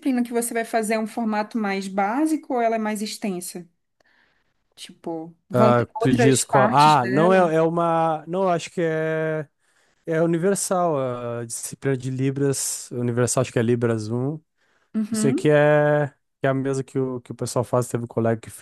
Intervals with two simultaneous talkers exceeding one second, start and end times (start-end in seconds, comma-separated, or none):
5.5-7.5